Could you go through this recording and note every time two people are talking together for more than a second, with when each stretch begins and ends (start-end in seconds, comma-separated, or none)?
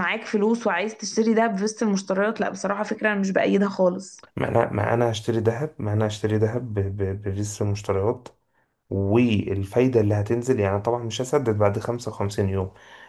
none